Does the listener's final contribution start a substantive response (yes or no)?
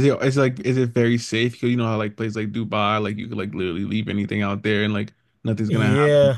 yes